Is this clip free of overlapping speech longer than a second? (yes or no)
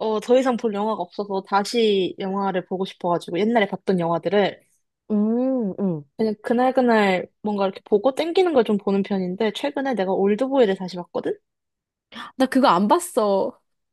yes